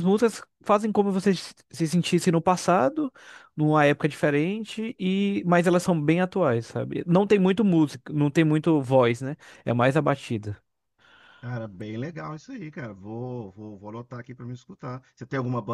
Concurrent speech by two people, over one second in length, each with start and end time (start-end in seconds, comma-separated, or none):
none